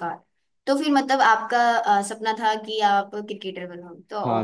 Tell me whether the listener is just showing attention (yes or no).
no